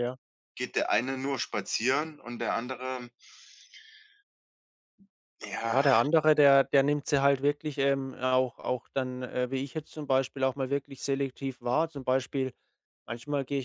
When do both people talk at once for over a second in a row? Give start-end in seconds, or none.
none